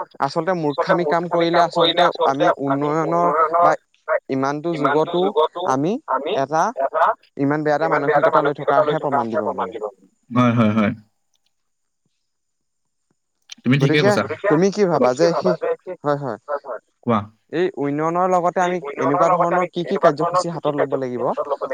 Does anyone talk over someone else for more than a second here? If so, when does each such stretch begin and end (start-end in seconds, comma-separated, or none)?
18.6-21.2